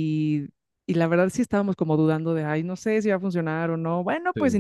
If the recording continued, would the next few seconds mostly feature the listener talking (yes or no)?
no